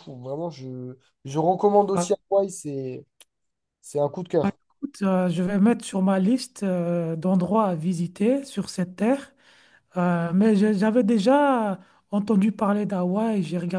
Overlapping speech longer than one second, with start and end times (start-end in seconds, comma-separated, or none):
none